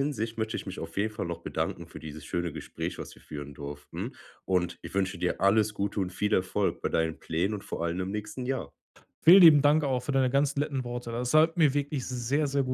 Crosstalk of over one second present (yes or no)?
no